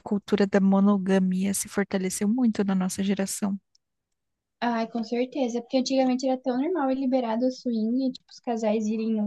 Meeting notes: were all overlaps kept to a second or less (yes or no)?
yes